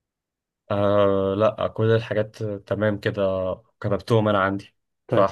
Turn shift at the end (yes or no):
no